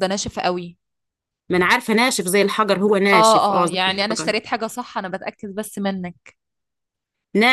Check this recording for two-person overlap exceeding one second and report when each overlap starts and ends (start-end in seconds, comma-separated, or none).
3.1-4.4